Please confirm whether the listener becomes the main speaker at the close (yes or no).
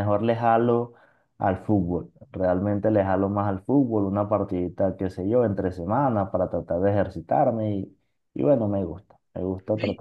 yes